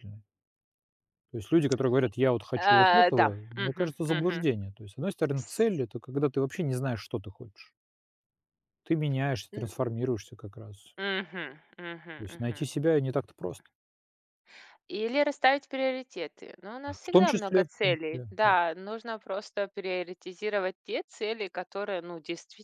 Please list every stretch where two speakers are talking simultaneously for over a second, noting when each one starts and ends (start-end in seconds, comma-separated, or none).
2.6-4.5, 17.0-18.5